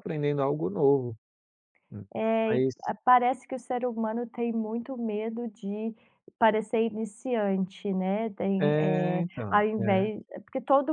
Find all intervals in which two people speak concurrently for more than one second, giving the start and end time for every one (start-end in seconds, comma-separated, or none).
8.6-10.1